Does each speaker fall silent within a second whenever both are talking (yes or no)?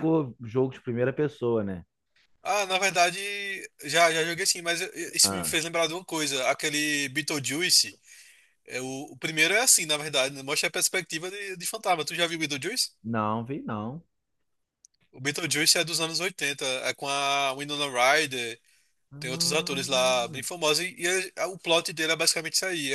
no